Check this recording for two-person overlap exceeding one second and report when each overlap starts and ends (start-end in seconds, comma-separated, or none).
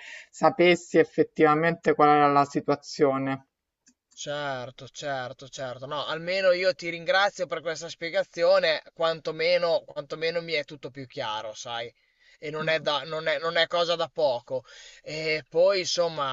none